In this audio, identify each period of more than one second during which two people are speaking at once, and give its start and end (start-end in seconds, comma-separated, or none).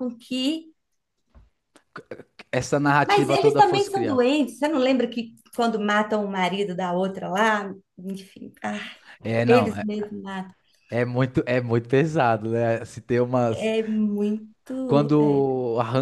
3.1-4.3